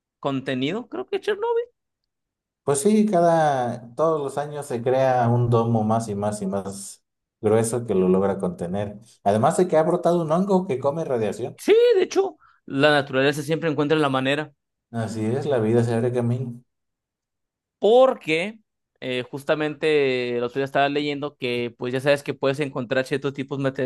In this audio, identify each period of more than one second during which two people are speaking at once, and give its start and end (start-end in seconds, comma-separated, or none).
none